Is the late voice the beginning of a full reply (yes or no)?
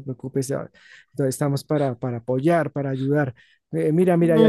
yes